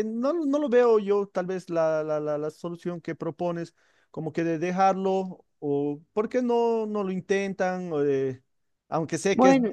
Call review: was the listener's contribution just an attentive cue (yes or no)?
yes